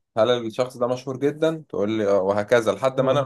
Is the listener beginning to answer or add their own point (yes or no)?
yes